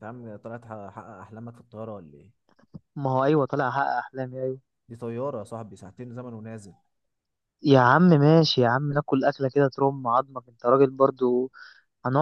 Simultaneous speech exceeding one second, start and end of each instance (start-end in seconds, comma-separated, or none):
none